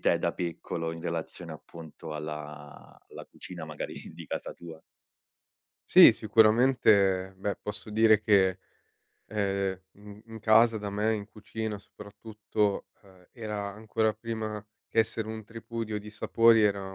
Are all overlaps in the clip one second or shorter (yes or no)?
yes